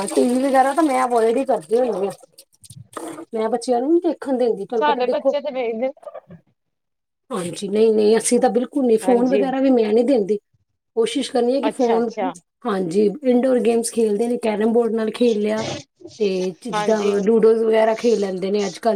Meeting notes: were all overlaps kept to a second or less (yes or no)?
yes